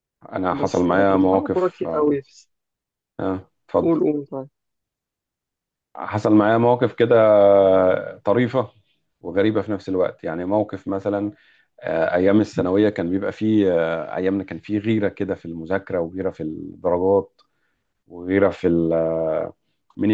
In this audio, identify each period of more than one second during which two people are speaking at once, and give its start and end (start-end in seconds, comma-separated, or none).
0.5-2.2